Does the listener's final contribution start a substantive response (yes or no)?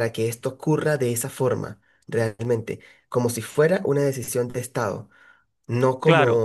no